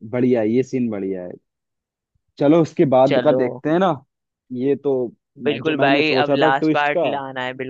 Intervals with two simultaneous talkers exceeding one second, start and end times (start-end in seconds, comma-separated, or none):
5.5-7.1